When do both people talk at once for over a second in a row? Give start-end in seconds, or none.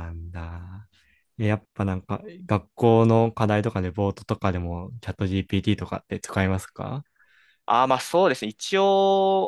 none